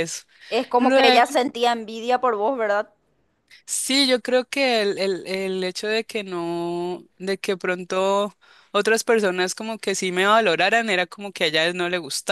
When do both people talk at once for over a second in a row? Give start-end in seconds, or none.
none